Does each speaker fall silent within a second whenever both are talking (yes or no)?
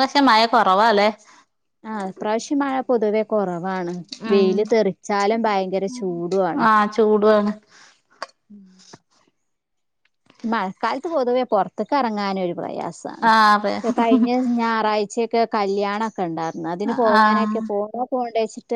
yes